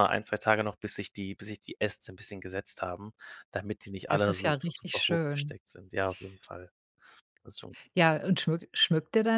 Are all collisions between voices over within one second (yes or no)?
no